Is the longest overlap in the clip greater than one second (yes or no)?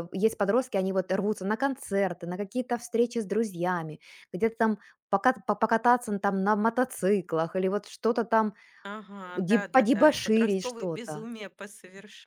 yes